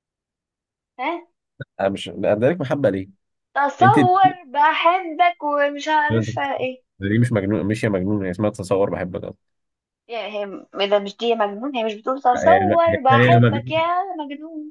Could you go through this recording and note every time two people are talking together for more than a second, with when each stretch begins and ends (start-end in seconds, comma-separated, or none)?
12.3-13.8